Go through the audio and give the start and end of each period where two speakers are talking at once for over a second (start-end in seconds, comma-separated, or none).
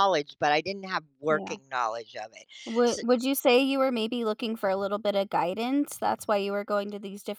none